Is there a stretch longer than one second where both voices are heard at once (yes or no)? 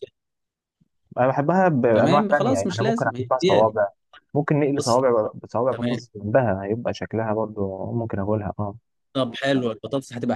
yes